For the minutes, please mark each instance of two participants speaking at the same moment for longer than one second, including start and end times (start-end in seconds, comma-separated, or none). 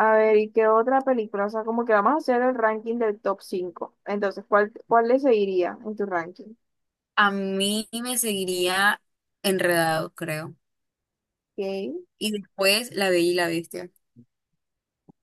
none